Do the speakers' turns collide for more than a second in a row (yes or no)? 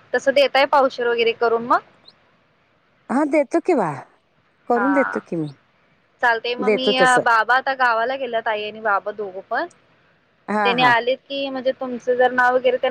no